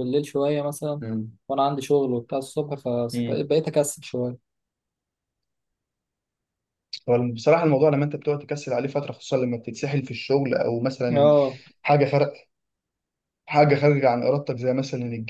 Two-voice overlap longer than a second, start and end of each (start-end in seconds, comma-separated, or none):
none